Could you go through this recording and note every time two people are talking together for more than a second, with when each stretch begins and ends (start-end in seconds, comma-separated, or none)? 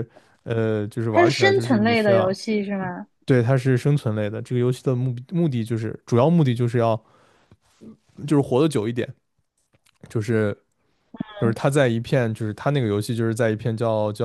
1.1-2.3